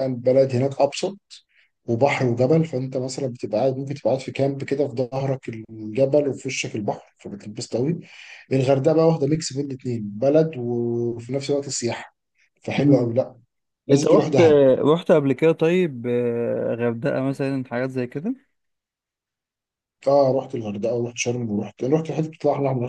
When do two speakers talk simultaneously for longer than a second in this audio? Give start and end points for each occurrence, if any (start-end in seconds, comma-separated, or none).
none